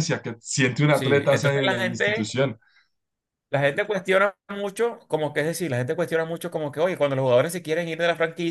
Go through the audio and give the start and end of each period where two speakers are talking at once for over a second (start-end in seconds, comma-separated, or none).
0.9-2.3